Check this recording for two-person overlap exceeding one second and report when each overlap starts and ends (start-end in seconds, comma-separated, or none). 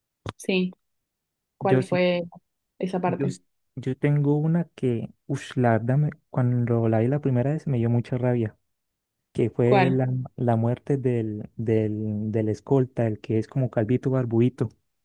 none